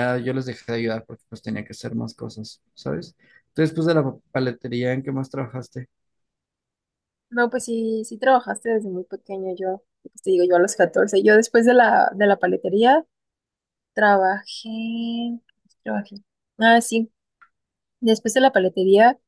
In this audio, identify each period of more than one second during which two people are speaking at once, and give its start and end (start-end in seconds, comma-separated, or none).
none